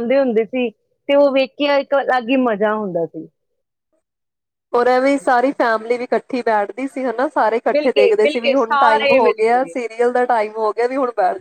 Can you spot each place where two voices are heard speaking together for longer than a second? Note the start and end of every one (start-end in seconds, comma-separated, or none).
7.7-9.7